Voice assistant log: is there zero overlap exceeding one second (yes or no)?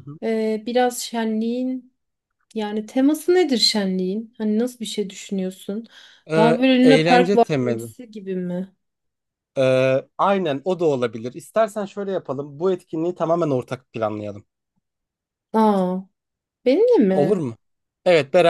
no